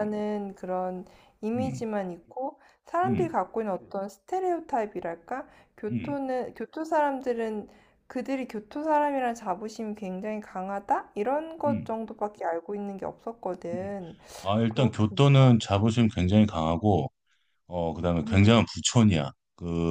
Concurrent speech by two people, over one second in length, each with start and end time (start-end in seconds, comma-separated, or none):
none